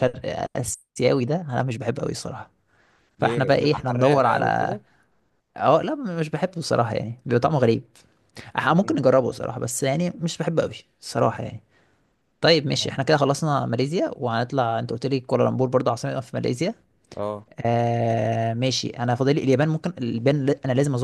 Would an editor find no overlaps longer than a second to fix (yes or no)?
no